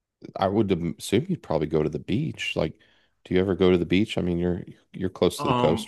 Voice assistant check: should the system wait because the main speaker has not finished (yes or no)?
no